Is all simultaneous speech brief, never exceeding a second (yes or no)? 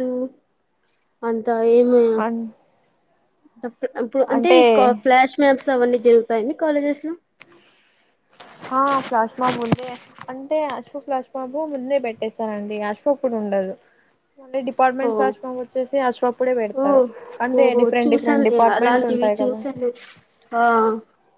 no